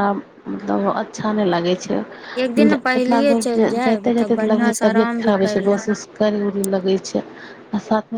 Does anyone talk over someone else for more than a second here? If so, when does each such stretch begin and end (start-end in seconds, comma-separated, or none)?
3.0-5.9